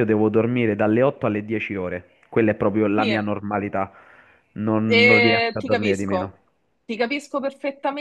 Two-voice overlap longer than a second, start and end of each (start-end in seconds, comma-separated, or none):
4.8-6.3